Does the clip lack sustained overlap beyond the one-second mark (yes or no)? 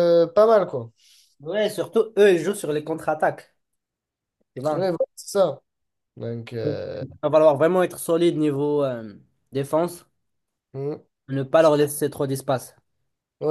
yes